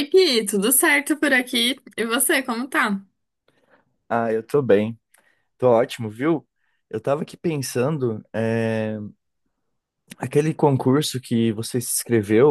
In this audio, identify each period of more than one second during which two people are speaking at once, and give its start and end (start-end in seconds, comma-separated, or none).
none